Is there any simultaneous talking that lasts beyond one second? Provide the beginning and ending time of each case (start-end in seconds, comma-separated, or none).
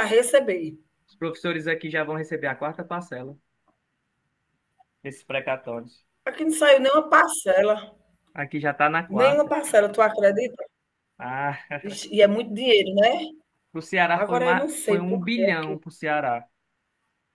14.1-15.8